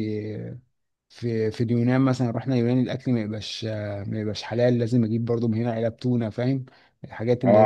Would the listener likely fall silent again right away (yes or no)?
no